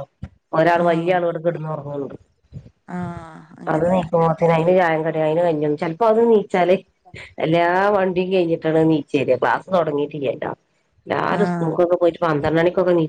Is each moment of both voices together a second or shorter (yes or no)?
yes